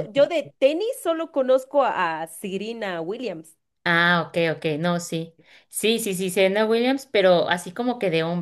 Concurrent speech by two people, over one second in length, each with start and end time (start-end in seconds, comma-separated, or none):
none